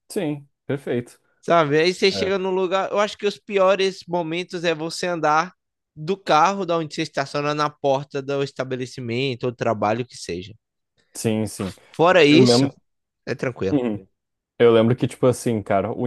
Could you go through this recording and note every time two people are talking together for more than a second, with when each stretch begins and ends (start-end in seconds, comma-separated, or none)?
none